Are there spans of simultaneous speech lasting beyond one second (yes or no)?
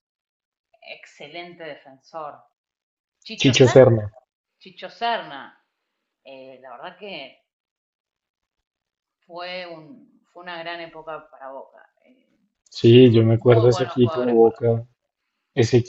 yes